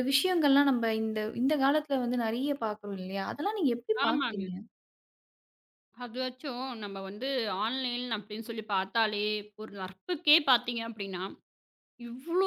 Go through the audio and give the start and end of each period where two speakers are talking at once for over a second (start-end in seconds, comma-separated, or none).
none